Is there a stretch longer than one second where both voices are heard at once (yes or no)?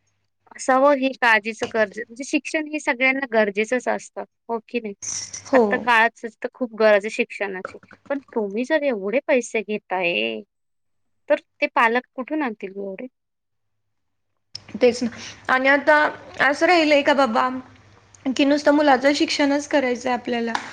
no